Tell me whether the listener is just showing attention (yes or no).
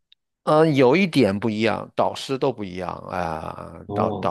no